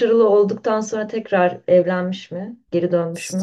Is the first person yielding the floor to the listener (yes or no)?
yes